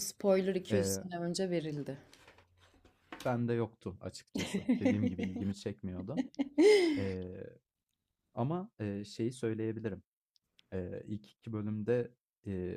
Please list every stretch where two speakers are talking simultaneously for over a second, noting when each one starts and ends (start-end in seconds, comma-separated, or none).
none